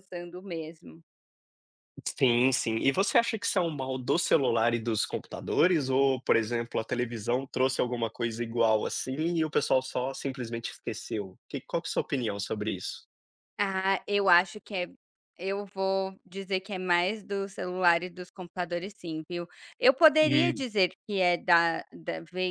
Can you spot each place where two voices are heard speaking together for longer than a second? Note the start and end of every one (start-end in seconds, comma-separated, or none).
none